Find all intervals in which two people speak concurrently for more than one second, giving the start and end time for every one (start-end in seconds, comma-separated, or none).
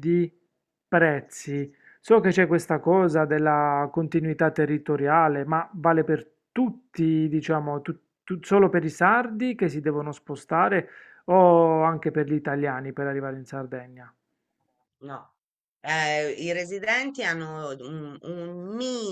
none